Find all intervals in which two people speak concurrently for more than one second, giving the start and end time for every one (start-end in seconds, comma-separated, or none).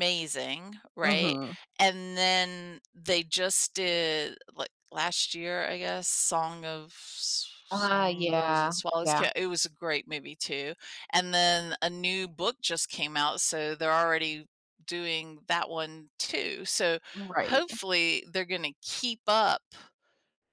7.7-9.3